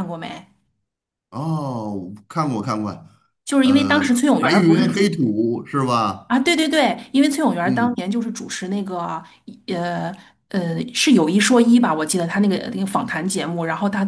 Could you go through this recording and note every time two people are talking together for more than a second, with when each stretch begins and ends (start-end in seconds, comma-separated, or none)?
3.6-5.2